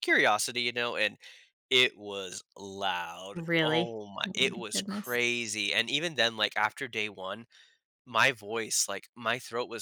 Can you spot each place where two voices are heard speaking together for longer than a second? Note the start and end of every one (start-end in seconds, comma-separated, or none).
3.3-5.2